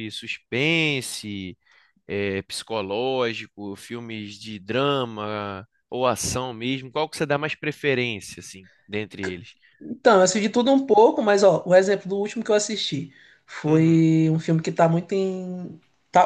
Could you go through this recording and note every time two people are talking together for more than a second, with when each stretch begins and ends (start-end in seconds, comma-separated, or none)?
none